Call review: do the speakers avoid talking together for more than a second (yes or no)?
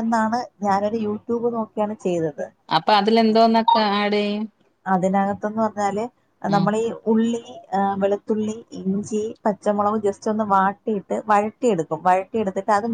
yes